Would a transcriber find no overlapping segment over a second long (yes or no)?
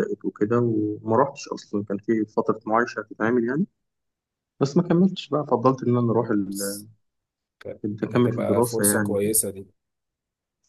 no